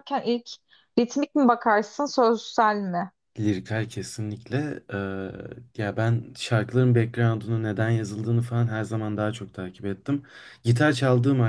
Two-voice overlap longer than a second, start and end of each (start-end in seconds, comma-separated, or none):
none